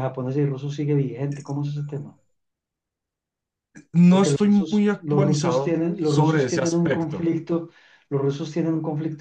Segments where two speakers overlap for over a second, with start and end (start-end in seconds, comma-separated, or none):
4.1-7.3